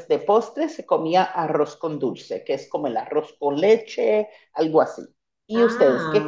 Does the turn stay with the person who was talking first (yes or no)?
no